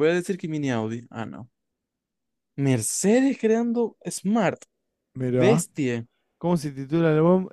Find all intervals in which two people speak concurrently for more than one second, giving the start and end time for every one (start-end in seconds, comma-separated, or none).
none